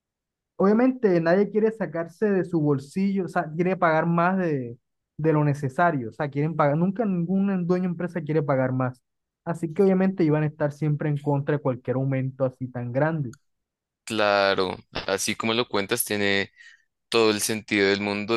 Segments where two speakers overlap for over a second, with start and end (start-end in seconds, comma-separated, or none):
none